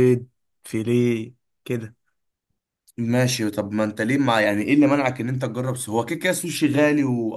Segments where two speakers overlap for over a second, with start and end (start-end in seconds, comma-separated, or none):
none